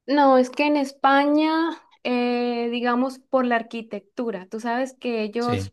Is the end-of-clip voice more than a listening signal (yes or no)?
no